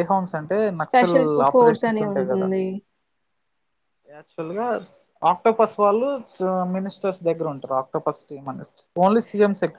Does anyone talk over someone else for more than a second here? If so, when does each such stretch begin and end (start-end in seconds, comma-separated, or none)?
0.8-2.5